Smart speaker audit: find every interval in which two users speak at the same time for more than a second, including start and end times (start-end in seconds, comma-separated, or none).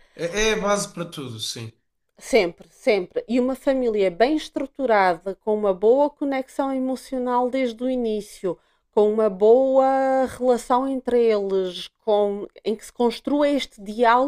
none